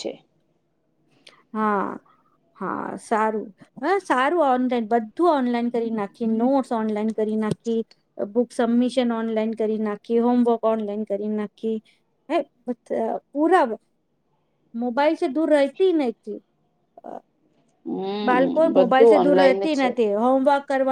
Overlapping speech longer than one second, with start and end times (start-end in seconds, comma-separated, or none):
18.3-19.9